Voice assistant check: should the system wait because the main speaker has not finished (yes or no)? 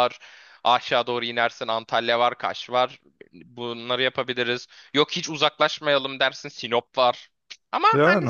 no